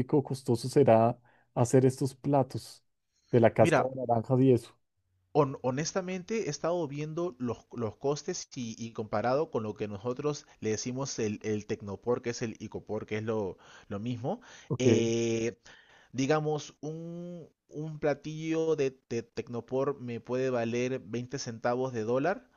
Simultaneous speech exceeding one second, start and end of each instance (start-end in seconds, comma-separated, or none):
none